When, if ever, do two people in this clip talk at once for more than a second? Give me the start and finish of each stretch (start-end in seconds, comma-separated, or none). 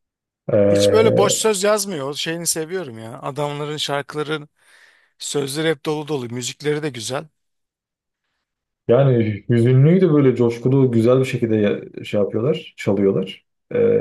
none